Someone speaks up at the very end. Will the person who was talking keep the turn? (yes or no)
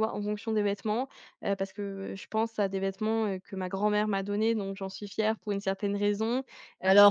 no